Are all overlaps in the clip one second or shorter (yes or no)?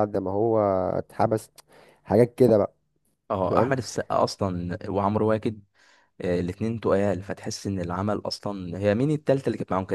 yes